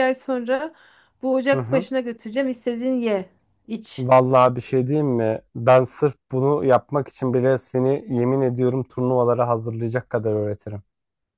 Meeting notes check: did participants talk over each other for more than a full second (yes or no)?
no